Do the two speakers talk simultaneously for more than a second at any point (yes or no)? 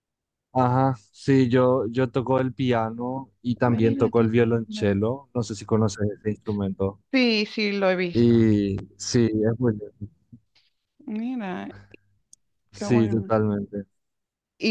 yes